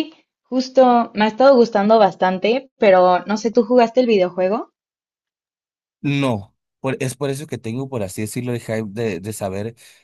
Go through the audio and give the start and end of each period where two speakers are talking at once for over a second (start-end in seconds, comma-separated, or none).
none